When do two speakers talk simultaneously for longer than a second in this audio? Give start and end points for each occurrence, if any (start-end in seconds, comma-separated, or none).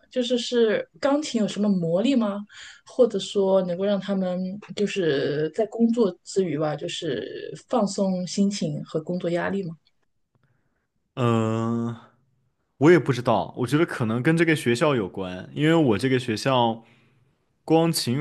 none